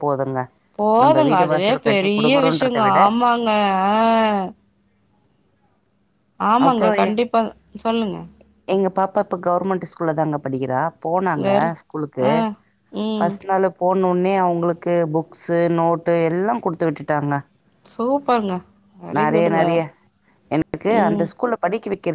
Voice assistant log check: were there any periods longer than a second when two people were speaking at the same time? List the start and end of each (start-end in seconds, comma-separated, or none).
1.0-3.0